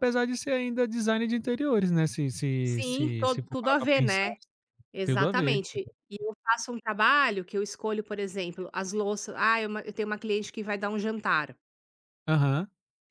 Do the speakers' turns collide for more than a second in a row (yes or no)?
yes